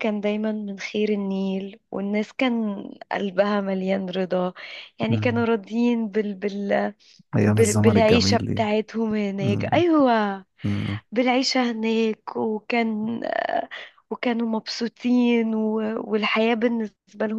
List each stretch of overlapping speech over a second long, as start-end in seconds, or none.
7.5-8.7